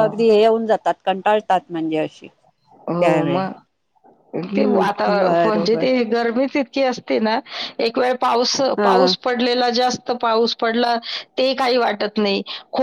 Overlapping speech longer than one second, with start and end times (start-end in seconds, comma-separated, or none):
4.5-5.8